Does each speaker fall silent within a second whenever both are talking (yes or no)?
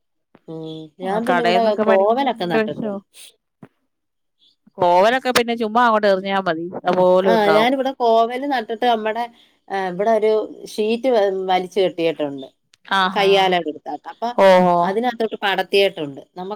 no